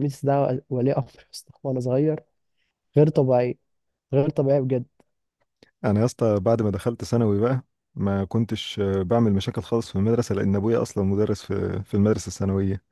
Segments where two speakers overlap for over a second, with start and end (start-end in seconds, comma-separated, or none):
none